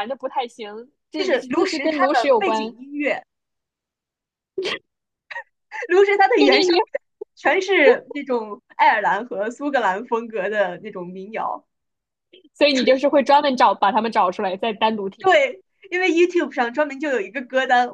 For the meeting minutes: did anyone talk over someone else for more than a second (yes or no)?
yes